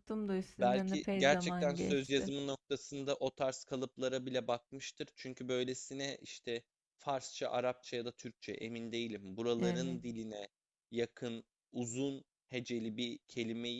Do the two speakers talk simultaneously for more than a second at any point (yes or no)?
yes